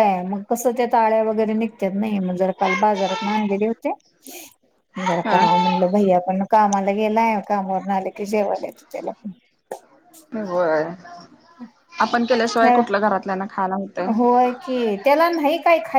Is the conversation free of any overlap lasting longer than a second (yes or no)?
yes